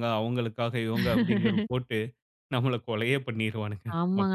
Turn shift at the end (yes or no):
yes